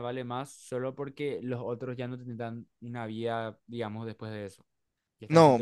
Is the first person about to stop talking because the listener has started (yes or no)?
yes